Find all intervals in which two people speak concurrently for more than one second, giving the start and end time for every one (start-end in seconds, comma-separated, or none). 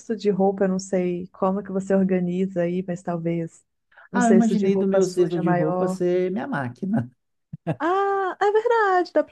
4.1-6.0